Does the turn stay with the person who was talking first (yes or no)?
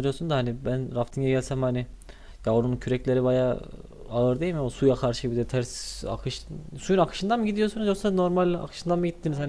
yes